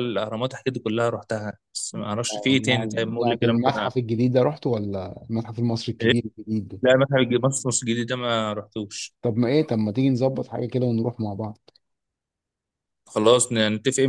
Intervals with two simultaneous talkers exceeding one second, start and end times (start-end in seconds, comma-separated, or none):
2.7-4.1